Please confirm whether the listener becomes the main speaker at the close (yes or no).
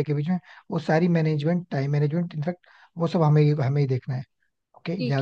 yes